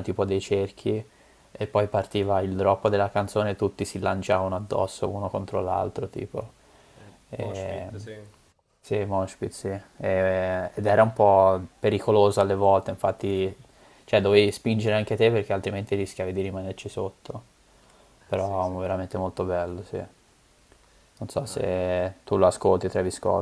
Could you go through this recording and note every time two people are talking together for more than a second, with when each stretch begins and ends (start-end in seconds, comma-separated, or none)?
none